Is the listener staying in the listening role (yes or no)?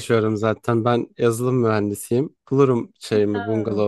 yes